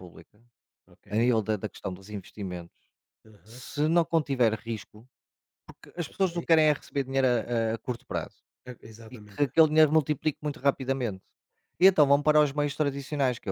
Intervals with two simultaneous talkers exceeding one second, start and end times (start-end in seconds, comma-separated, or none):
none